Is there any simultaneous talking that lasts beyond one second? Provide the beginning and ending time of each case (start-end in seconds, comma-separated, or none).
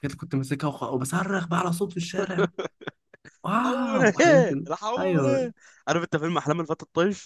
3.6-5.5